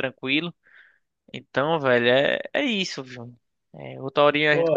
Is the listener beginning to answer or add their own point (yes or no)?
no